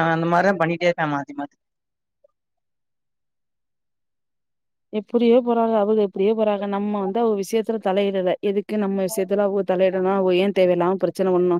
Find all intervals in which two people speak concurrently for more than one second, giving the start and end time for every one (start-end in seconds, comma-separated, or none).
none